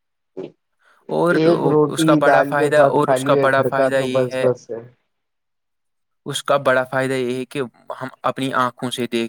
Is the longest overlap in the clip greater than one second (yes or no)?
yes